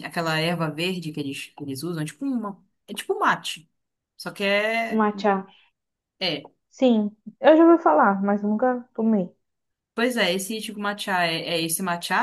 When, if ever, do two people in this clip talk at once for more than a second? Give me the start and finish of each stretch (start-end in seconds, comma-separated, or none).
none